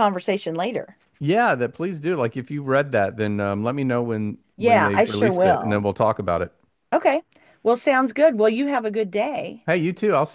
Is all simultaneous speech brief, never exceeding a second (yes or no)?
no